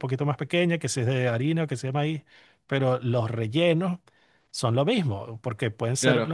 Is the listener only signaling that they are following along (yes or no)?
yes